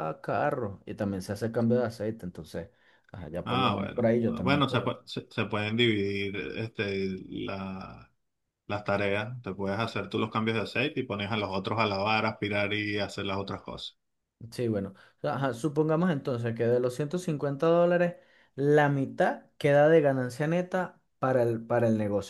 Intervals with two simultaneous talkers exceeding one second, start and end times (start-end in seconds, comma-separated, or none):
3.4-4.9